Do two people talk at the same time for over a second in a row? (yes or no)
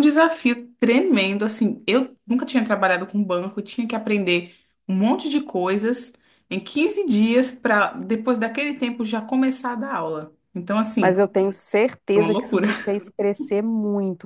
no